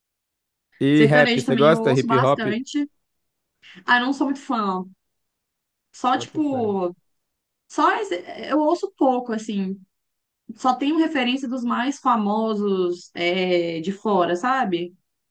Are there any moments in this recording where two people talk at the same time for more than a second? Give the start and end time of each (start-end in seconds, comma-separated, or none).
0.9-2.4